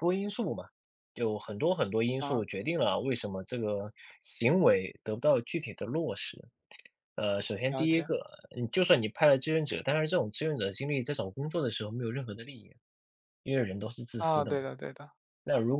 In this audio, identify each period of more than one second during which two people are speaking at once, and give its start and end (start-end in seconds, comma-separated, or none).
none